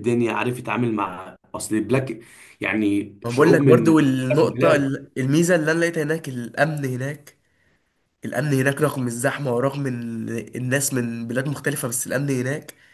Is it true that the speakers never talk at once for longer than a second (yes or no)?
no